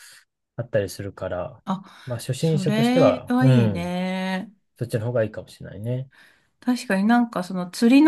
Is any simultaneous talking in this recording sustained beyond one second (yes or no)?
yes